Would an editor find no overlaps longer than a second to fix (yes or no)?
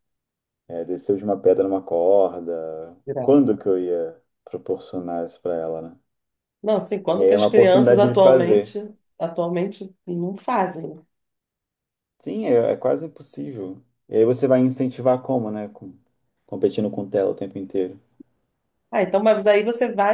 no